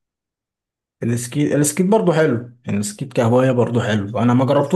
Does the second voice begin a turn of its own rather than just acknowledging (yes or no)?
no